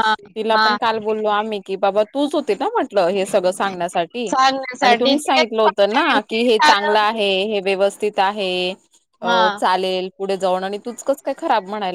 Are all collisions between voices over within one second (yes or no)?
no